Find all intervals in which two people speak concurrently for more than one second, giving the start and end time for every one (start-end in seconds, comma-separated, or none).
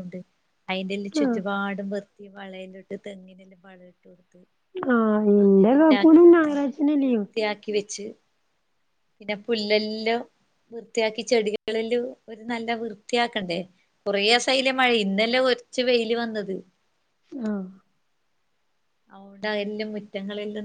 none